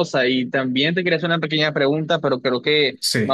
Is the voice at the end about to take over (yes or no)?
no